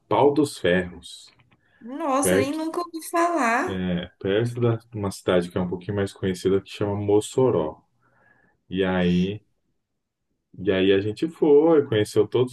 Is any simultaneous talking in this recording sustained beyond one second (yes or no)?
no